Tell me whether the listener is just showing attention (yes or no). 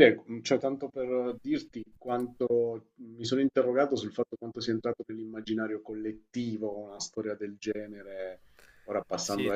no